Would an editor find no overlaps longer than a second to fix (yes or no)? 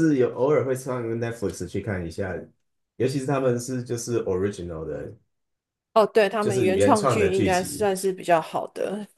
no